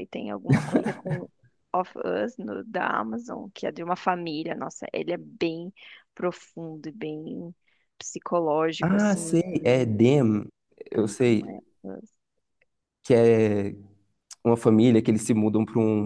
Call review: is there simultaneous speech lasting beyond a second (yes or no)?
yes